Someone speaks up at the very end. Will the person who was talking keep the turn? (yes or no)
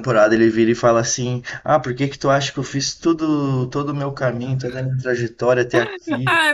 no